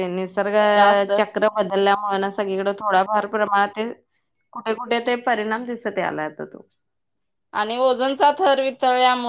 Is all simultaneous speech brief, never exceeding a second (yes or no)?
yes